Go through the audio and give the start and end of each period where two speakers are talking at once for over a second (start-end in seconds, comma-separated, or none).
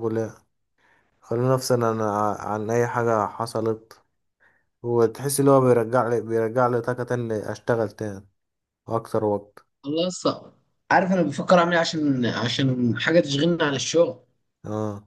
none